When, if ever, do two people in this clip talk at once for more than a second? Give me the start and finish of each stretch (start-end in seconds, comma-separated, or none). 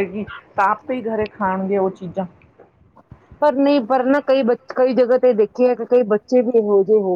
none